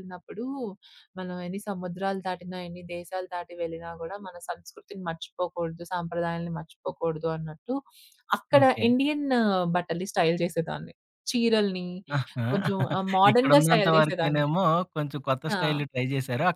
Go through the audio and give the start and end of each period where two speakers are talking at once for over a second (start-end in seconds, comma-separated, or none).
13.3-14.5